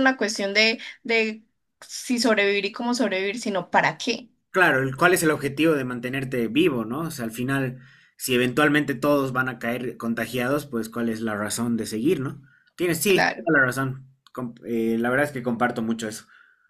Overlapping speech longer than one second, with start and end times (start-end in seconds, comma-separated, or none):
none